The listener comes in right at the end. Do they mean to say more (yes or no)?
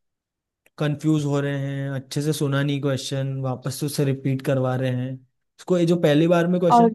no